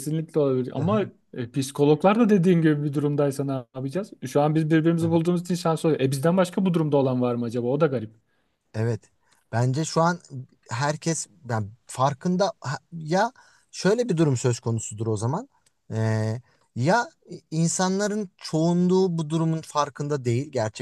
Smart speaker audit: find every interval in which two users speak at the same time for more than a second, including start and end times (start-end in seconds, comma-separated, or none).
none